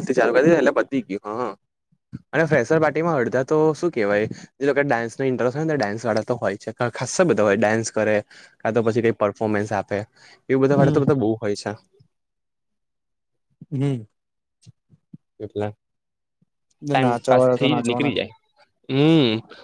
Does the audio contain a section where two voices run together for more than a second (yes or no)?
yes